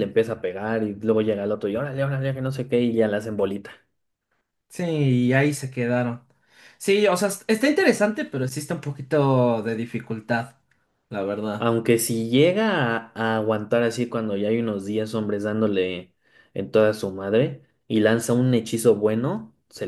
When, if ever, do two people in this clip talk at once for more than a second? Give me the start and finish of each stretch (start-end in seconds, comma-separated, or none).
none